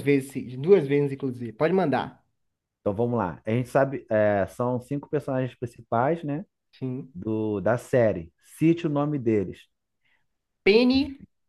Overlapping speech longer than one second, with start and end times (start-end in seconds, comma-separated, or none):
none